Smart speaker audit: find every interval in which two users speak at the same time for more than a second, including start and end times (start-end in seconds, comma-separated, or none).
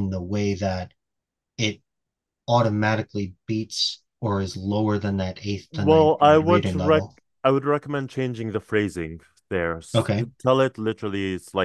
5.7-7.0